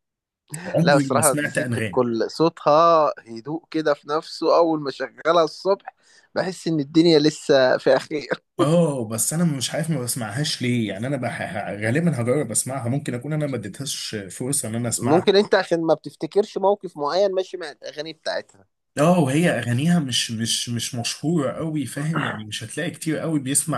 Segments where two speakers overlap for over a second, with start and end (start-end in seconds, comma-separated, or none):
0.8-2.0